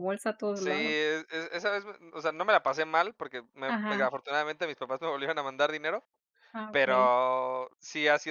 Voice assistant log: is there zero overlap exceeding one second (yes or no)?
yes